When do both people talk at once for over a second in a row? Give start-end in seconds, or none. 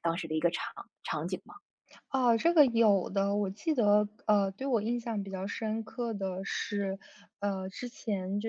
none